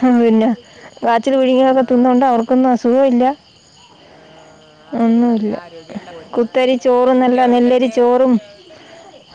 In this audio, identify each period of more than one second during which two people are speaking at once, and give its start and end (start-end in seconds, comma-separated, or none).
6.3-8.0